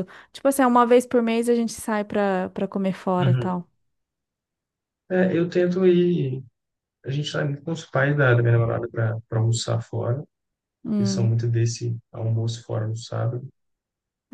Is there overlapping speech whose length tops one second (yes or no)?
no